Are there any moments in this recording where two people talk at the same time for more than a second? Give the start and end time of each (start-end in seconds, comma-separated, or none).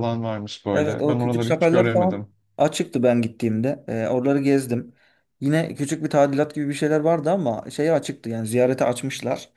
0.7-2.3